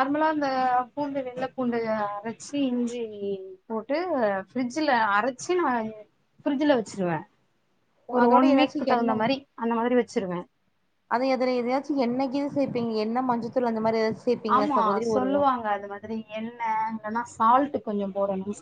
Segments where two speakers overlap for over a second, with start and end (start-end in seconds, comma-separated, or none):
none